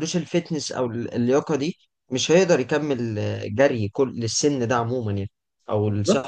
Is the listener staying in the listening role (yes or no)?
no